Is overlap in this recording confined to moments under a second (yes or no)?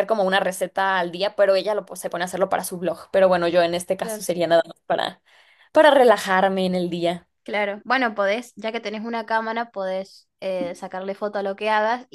yes